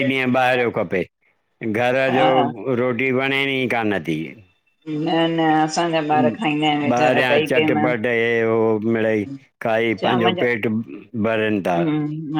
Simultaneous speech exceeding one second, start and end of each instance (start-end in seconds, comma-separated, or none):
6.2-7.8